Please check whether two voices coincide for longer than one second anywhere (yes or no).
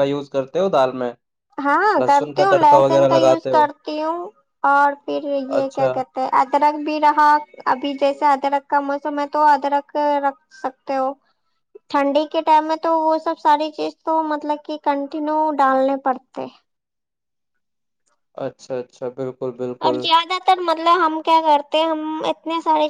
yes